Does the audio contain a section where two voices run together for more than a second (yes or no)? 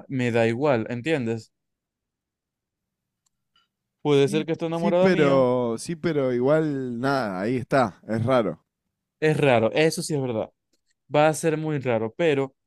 yes